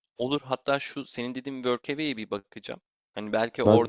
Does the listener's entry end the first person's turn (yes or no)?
no